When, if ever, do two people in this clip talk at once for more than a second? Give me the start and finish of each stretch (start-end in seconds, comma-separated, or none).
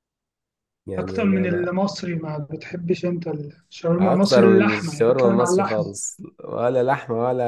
4.0-5.8